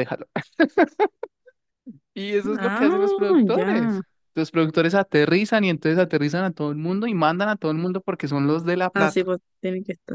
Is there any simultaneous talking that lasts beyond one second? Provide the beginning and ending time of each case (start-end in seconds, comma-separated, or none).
2.6-4.0